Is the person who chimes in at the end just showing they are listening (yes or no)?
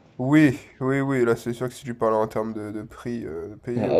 no